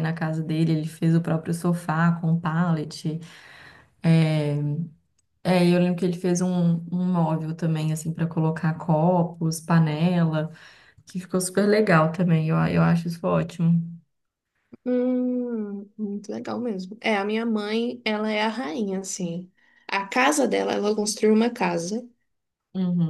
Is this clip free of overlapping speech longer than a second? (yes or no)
yes